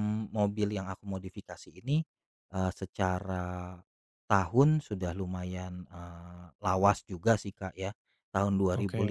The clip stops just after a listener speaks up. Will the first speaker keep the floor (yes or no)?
yes